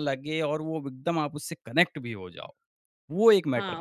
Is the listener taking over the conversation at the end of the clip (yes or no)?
yes